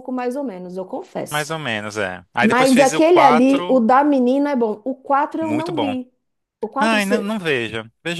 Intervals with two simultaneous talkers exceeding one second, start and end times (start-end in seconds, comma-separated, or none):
2.4-3.8